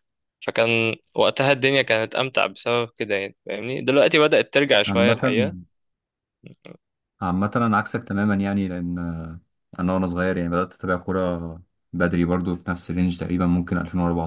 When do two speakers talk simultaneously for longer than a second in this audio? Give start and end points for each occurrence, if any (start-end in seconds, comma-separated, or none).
none